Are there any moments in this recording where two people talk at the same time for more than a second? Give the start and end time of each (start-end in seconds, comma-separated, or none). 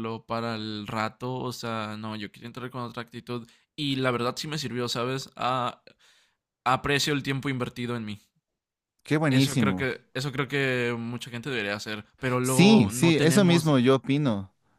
12.4-13.7